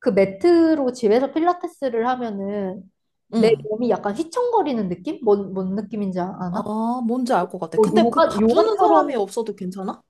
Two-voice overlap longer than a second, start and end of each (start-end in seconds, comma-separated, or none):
7.7-9.1